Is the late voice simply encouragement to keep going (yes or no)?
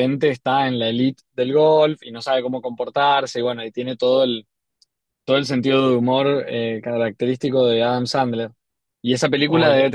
yes